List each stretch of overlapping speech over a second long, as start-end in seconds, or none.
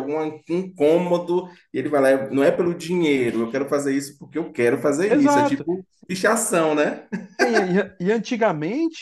none